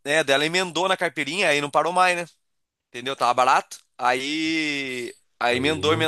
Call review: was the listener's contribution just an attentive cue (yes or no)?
yes